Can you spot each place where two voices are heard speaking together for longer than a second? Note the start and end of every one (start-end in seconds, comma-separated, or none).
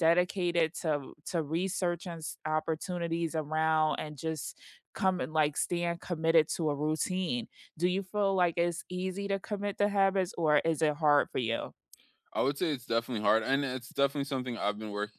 none